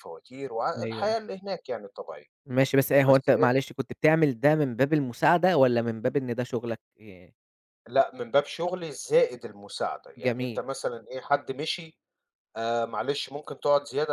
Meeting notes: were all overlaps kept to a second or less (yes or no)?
yes